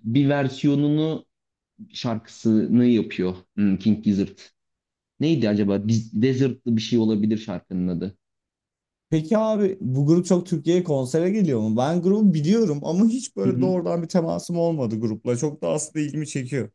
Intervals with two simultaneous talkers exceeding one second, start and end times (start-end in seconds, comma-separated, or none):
none